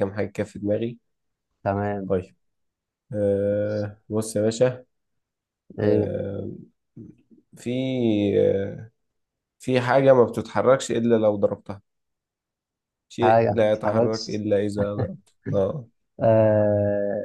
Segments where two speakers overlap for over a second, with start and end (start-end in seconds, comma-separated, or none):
13.2-14.4